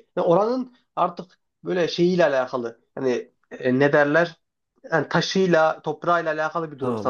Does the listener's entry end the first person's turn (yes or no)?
yes